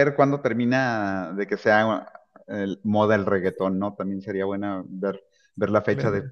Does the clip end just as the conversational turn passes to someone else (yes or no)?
no